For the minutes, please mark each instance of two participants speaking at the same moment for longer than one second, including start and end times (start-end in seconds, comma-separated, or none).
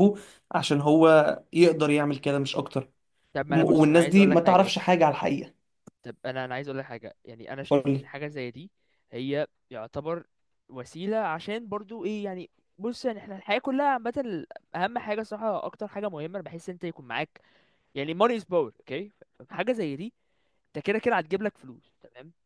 3.5-5.0